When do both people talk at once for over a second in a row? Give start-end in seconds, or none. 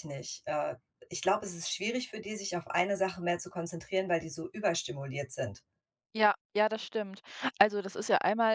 none